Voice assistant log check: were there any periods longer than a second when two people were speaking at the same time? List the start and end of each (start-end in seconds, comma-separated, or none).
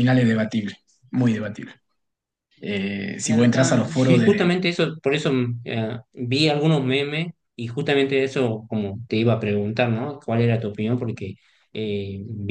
3.3-4.5